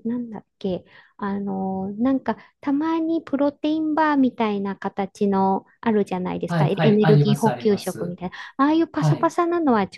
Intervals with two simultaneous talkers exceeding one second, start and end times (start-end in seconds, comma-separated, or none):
6.5-8.2